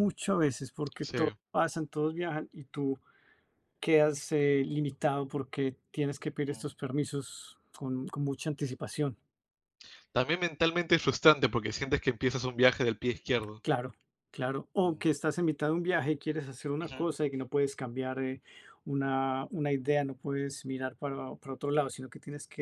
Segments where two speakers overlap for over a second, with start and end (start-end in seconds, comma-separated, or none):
none